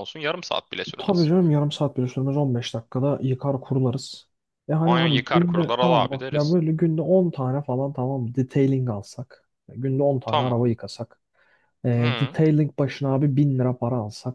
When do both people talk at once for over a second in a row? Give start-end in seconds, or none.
4.8-6.5